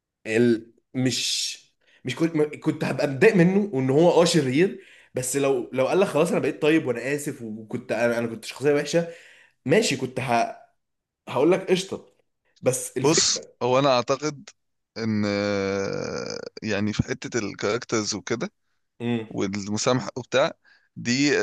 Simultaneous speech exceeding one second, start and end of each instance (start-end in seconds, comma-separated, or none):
none